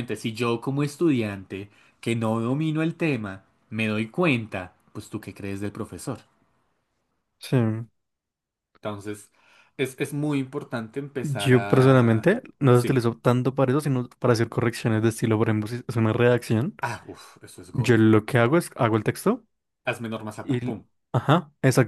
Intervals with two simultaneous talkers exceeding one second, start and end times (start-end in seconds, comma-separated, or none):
11.2-13.1